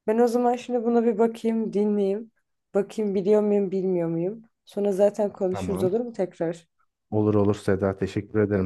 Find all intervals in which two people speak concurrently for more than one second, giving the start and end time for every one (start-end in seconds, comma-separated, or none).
none